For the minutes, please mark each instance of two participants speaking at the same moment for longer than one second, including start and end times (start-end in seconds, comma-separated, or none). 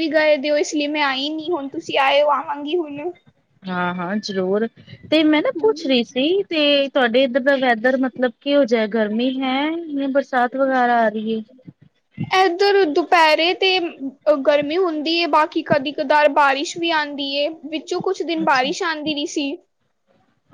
none